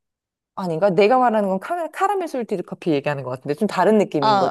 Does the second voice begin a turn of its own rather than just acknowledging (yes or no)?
yes